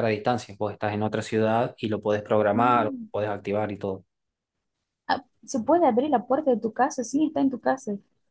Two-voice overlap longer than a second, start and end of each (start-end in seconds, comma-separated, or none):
none